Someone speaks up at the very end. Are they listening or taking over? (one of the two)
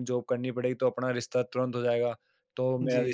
listening